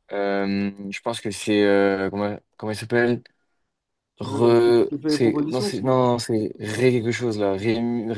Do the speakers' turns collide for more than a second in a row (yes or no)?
yes